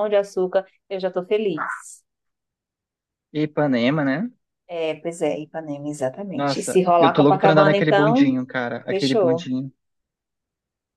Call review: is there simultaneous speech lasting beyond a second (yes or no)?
yes